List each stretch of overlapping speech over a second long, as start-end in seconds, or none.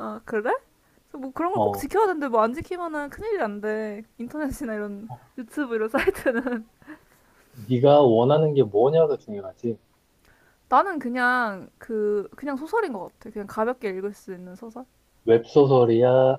none